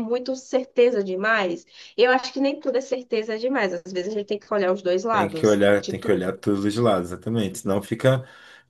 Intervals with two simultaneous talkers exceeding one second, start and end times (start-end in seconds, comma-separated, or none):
5.1-6.3